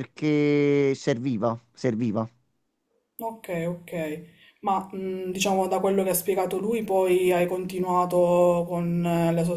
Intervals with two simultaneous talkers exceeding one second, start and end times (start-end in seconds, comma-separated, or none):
none